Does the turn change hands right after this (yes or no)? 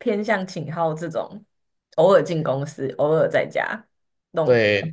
yes